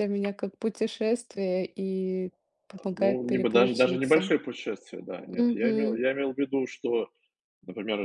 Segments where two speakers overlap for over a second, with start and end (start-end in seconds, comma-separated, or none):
2.9-4.3